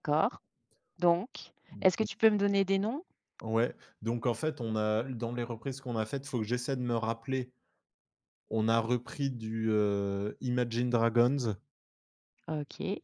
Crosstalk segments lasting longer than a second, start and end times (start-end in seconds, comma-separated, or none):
none